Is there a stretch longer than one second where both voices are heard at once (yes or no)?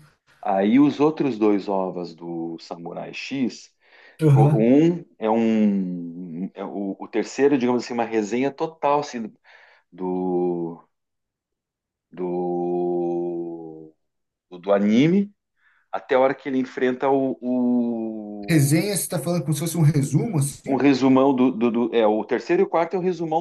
no